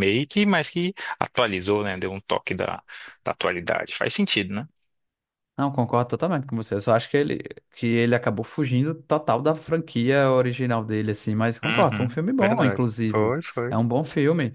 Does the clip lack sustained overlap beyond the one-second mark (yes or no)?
no